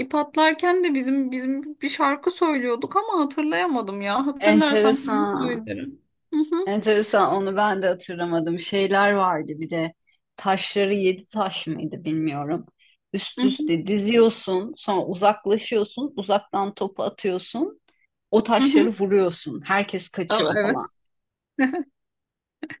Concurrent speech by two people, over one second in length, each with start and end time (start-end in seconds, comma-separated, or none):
4.4-5.8